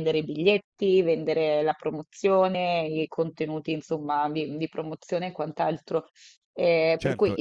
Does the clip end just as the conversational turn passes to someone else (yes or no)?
yes